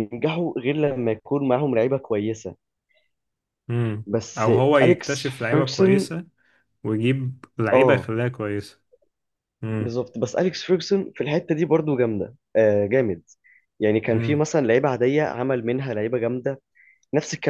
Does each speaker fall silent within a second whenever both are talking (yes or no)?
no